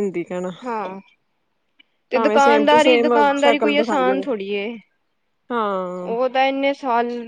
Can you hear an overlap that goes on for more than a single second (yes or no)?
yes